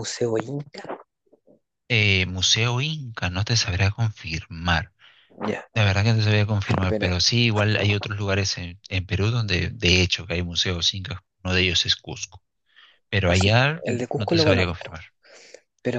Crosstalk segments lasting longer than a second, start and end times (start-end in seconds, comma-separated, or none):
13.2-15.0